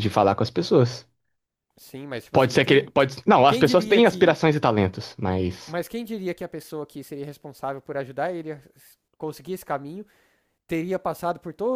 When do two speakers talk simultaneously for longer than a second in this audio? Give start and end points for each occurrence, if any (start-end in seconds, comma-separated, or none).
2.3-4.4